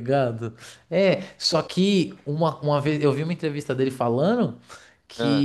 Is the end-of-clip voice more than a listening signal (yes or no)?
no